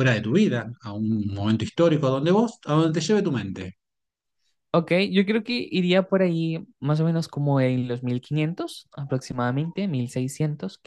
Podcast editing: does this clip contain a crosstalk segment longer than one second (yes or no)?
no